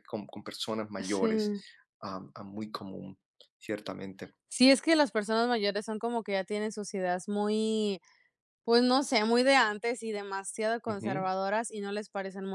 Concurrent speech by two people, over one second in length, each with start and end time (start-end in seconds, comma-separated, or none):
none